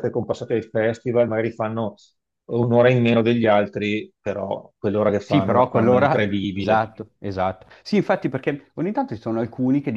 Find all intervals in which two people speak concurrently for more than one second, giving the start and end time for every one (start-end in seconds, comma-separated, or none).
5.2-6.9